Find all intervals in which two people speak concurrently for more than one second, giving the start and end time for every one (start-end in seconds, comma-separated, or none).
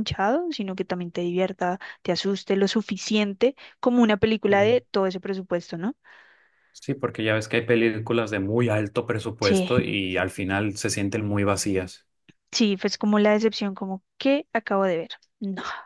none